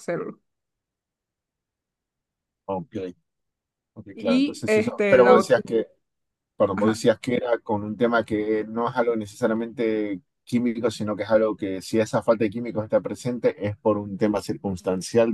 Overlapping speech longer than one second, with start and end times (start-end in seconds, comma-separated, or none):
4.2-5.6